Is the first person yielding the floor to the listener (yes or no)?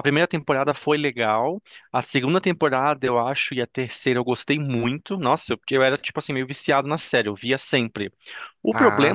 no